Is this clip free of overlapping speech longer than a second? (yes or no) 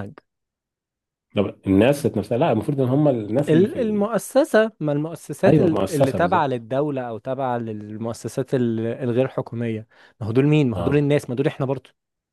no